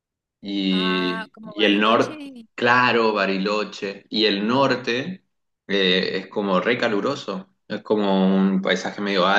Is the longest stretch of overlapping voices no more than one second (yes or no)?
no